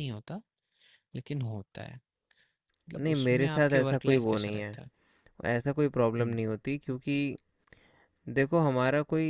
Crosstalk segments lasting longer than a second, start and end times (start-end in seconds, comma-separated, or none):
3.0-4.8